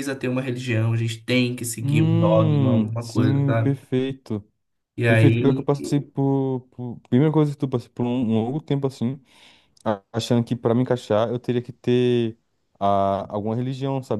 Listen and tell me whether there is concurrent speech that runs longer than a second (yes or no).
yes